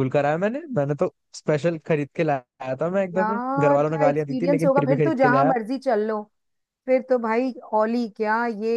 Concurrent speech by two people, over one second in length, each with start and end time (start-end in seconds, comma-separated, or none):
3.1-5.5